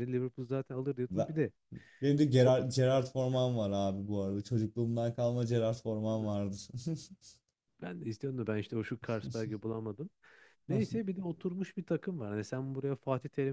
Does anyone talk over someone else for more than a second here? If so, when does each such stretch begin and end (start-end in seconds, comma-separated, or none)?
none